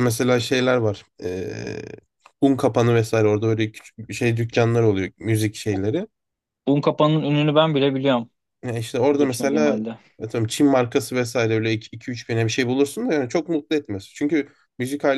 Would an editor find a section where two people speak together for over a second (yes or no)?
no